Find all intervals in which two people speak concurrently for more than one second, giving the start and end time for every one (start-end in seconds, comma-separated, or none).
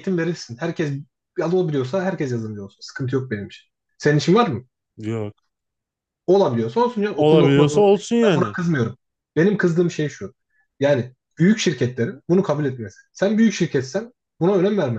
7.1-8.6